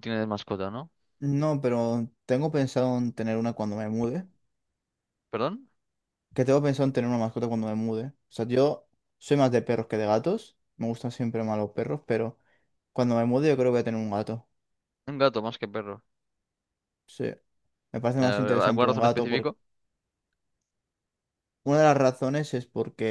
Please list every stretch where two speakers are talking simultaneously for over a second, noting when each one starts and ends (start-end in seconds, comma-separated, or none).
18.2-19.6